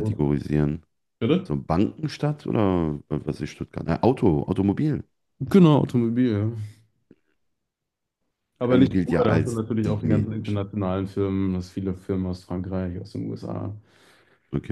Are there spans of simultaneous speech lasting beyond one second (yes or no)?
yes